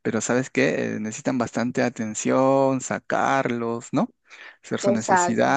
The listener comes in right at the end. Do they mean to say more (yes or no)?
no